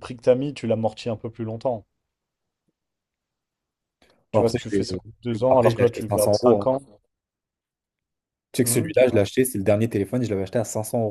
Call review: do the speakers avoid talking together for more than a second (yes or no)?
no